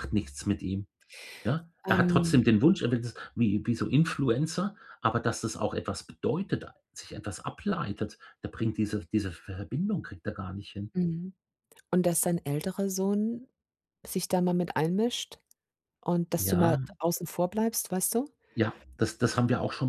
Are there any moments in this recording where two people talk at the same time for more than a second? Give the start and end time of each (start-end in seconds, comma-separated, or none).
none